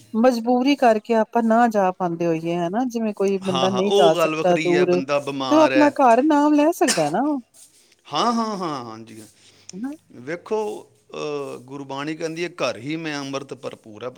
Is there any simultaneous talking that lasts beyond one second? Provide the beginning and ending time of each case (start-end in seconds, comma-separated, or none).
3.5-5.9